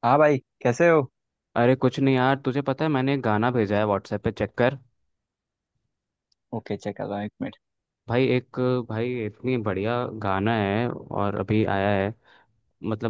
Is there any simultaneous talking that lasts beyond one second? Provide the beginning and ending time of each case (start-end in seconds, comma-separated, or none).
none